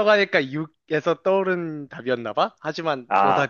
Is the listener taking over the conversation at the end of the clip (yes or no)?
yes